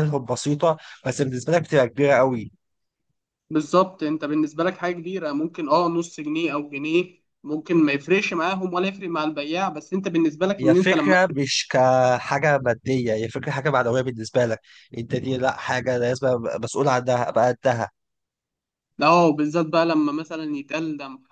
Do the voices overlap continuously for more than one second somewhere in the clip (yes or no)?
no